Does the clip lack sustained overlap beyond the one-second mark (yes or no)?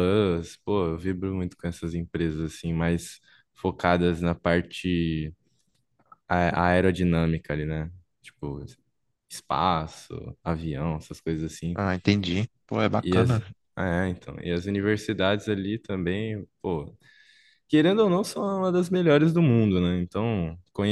yes